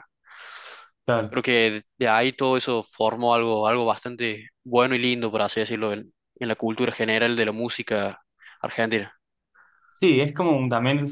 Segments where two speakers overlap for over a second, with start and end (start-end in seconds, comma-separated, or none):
none